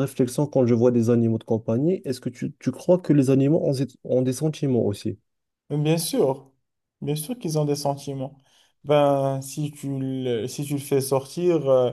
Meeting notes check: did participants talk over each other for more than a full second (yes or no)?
no